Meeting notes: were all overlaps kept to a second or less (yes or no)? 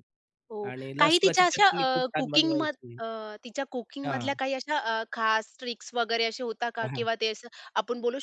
no